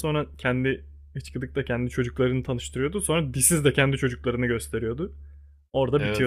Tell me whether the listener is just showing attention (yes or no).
no